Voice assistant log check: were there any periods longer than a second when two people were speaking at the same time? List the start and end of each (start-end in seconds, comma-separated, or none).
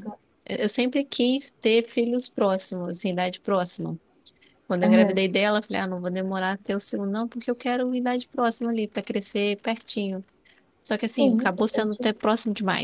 11.0-12.3